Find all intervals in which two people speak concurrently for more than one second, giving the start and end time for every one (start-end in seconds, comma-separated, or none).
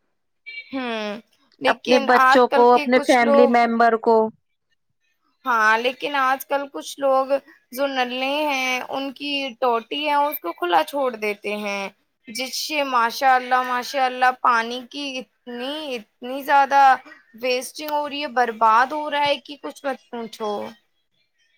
1.7-3.6